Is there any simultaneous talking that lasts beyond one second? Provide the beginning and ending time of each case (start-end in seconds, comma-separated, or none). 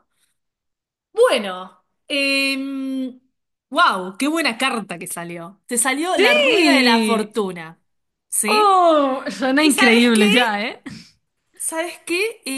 6.1-7.3